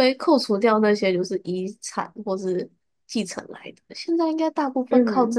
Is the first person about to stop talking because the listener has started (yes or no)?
no